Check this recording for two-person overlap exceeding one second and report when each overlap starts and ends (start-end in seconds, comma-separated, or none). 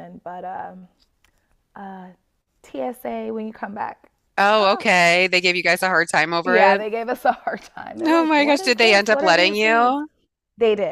8.1-10.0